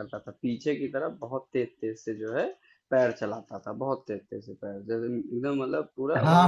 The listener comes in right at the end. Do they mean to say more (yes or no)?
yes